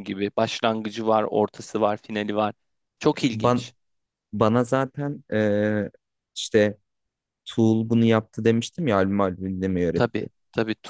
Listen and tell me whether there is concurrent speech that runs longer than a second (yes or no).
no